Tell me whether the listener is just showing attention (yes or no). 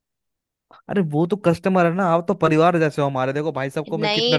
no